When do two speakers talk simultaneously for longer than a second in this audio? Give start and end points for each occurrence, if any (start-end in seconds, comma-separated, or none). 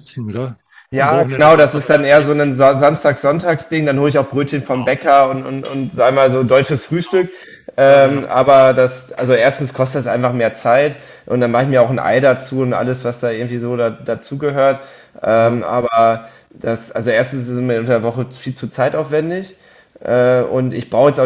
0.9-2.5